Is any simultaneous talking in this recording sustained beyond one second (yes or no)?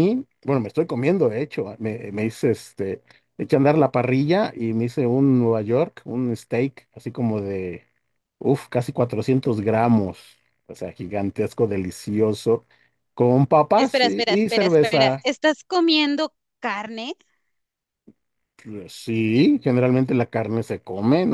yes